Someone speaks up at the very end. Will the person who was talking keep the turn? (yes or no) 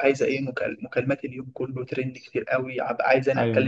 no